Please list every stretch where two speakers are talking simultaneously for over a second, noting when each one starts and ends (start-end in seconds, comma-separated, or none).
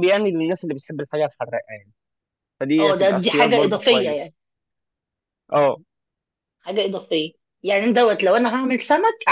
2.8-4.3